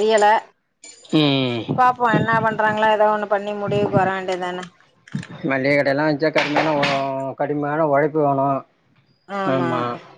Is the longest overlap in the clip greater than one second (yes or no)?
no